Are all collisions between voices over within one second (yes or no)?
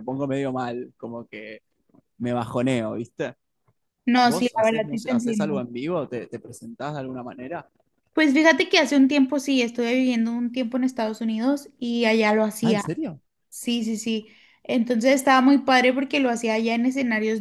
no